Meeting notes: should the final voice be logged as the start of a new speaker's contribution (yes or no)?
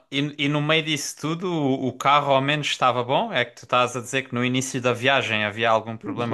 yes